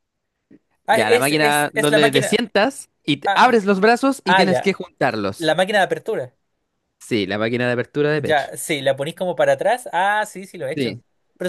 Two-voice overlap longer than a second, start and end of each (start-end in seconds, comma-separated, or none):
0.9-2.4